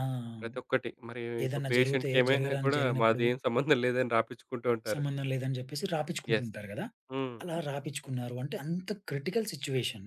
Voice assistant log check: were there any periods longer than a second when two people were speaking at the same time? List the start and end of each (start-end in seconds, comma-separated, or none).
1.4-3.2